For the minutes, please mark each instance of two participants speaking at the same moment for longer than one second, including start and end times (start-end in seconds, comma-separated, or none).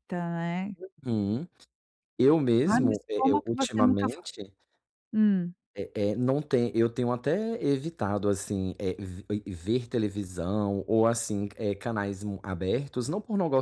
2.7-4.2